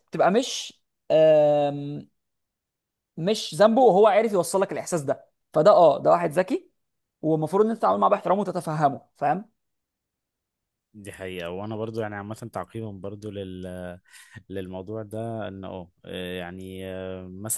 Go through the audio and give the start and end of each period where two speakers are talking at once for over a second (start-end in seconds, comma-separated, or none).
none